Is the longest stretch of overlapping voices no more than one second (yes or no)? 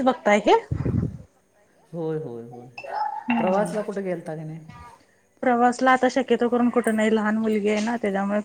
yes